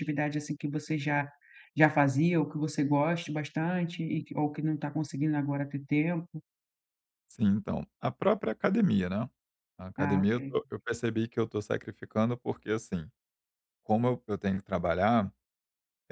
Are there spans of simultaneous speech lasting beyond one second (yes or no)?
no